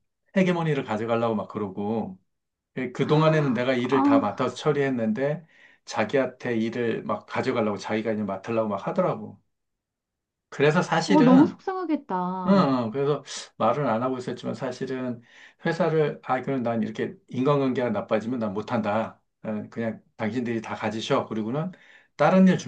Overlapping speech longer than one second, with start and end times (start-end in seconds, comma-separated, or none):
3.1-4.8